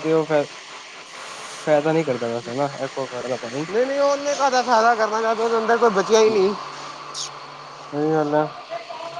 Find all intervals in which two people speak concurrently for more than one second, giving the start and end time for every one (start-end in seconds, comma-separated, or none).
none